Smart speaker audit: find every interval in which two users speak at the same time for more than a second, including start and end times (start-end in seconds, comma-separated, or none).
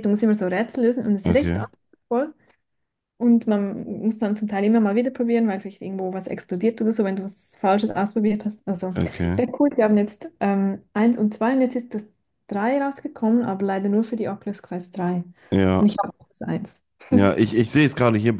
none